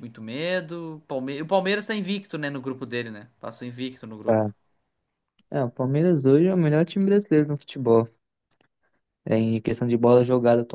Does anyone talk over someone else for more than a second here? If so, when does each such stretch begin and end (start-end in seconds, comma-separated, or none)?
none